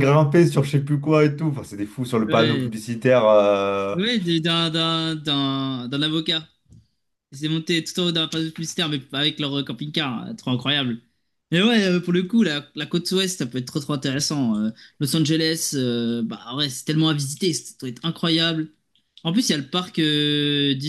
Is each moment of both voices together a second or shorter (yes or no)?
yes